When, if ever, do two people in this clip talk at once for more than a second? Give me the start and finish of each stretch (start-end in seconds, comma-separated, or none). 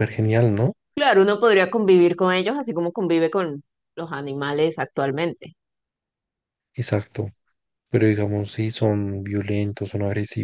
none